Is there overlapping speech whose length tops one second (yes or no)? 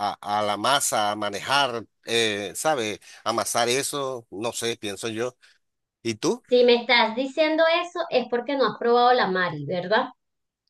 no